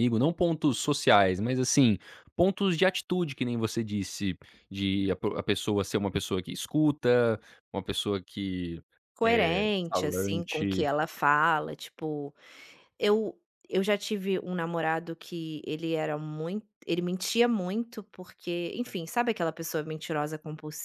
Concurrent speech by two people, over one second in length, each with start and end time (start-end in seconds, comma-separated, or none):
9.2-10.9